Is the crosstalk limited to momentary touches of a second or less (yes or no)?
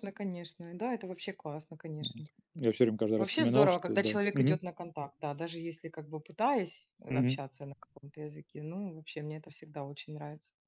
no